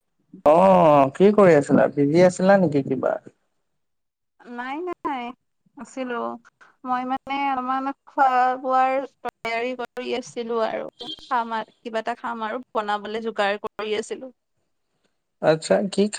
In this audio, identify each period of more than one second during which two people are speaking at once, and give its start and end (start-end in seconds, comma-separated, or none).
none